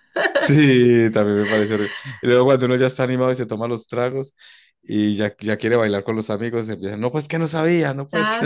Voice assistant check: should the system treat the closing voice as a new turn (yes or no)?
yes